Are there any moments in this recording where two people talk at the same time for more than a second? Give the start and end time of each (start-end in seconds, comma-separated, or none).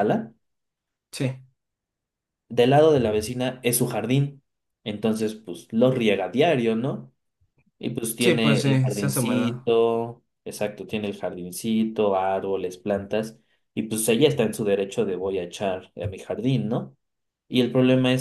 8.2-9.6